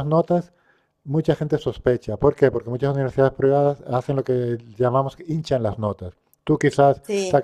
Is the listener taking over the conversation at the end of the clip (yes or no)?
no